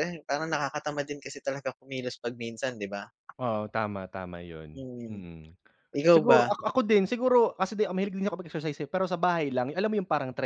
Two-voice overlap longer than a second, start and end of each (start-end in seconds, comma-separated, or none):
none